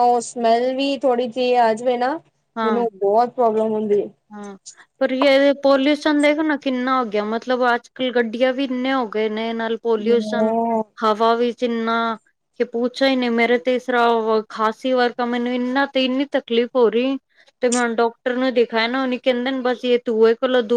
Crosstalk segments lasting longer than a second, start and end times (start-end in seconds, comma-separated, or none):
none